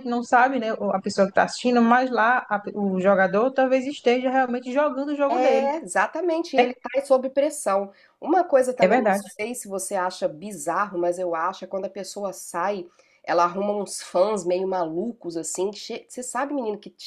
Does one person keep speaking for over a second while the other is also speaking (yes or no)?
no